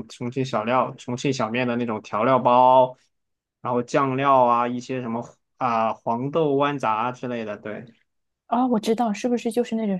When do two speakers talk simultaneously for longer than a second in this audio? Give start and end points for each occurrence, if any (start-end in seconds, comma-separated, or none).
none